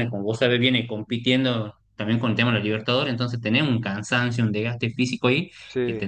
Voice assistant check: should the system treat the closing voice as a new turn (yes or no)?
no